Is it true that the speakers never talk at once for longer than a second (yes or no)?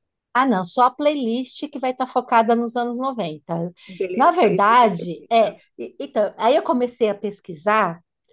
no